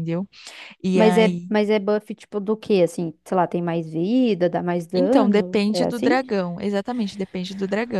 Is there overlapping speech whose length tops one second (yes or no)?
yes